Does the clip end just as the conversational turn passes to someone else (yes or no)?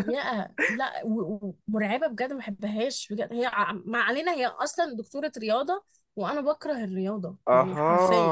yes